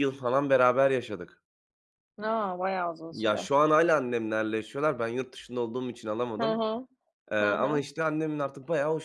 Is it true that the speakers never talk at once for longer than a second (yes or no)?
yes